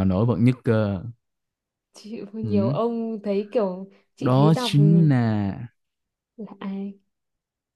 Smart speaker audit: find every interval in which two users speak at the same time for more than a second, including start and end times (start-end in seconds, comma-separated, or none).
none